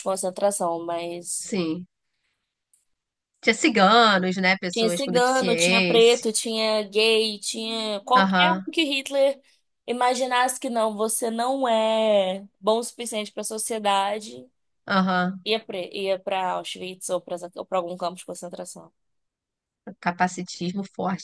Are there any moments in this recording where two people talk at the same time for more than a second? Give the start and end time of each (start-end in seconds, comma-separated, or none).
4.7-6.2